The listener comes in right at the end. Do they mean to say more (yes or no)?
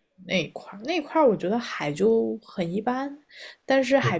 no